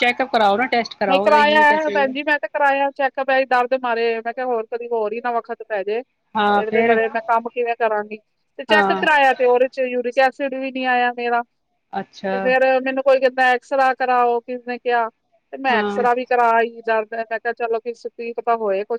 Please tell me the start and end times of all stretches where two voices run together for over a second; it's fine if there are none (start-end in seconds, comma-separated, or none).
none